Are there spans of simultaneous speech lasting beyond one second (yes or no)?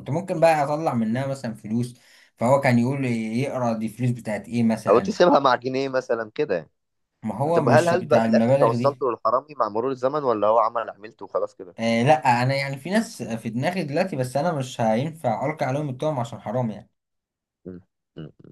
yes